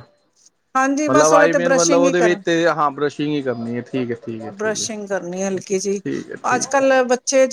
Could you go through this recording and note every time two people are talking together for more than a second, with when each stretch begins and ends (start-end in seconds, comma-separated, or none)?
1.1-2.4